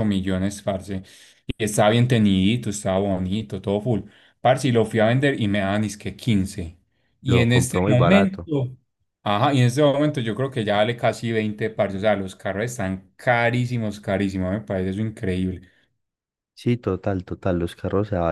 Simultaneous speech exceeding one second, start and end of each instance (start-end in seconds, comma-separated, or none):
7.3-8.5